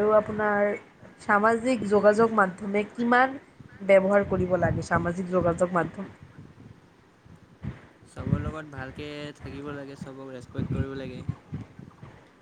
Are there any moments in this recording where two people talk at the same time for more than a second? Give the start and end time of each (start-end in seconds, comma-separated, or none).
none